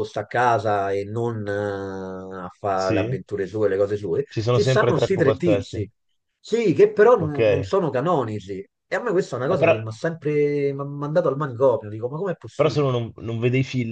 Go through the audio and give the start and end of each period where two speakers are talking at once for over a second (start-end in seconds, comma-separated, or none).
4.3-5.8